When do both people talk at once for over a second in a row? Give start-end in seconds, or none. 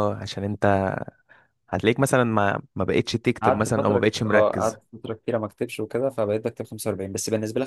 3.4-4.8